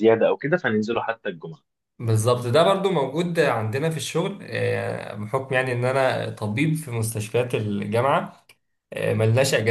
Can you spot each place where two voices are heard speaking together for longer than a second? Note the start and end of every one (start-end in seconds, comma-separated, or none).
none